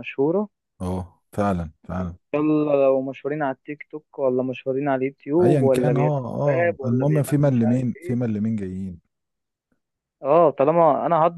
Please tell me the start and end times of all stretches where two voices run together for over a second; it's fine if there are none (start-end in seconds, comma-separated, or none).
5.4-8.2